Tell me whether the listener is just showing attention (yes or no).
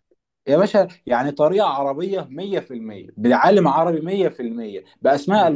yes